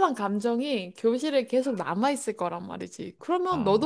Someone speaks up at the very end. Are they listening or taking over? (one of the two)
listening